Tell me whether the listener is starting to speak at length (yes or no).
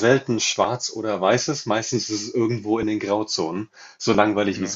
no